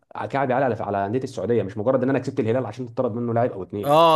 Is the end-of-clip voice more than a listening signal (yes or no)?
yes